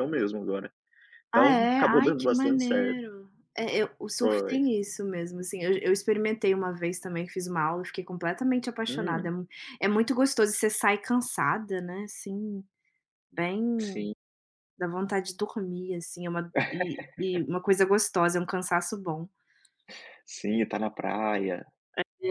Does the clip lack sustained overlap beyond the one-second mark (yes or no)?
no